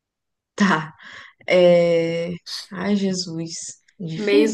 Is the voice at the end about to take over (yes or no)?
yes